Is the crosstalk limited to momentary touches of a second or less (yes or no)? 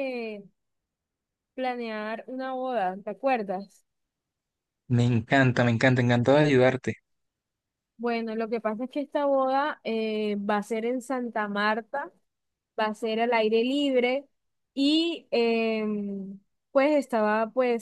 yes